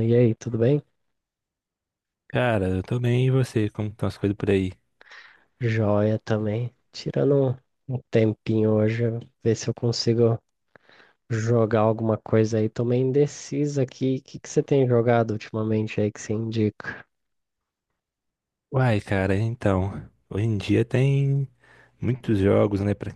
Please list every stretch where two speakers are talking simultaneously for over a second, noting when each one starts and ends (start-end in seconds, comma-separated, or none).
none